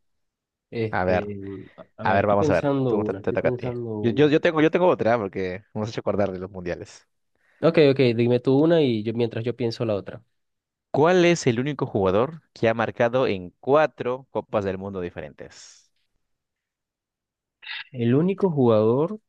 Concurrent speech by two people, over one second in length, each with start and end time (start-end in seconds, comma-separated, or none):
2.0-4.3